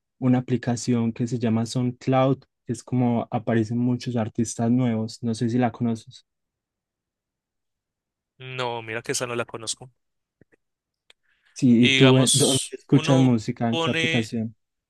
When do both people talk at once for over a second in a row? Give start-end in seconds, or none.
11.8-14.3